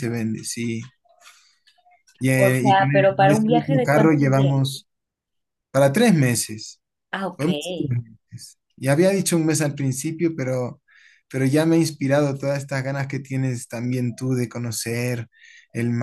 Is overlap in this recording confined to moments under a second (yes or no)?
no